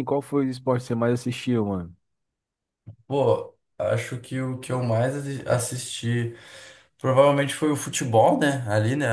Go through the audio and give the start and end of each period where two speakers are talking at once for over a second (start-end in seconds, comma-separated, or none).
none